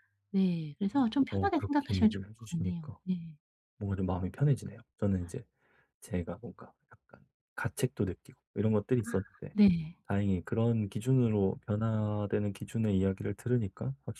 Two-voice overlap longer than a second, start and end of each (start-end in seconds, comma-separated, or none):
1.3-3.0